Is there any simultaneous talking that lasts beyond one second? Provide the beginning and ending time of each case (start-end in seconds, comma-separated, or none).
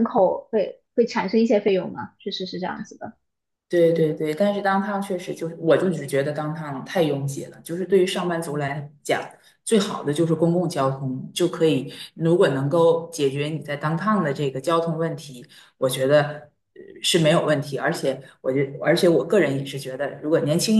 none